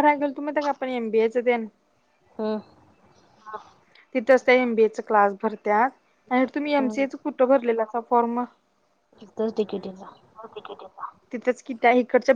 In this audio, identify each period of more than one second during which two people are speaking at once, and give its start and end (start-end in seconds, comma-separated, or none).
none